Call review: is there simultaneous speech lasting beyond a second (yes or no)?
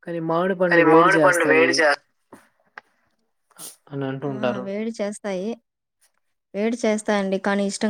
no